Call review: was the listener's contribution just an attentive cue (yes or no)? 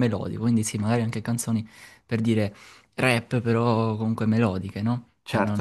no